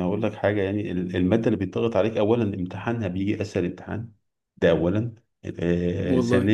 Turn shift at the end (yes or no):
no